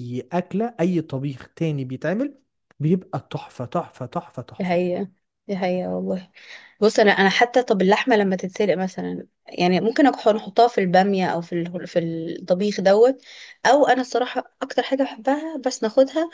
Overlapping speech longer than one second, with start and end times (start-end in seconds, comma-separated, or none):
none